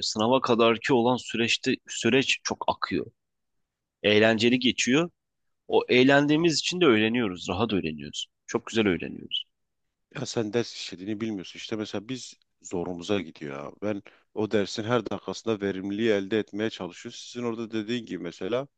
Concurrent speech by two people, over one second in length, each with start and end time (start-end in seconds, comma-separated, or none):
none